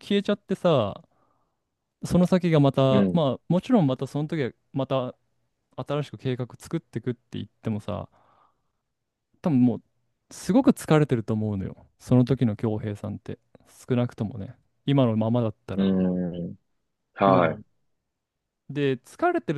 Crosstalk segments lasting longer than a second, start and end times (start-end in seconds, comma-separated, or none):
none